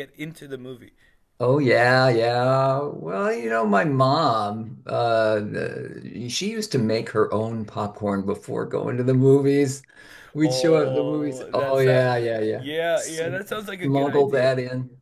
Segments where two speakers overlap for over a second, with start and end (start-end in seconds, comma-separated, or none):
10.4-11.9, 12.5-14.5